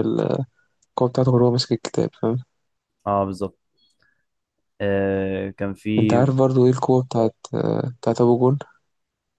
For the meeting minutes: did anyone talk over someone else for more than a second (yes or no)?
no